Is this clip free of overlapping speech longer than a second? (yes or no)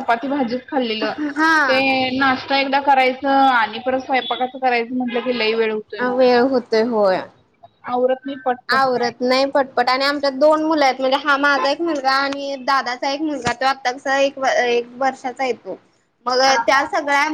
yes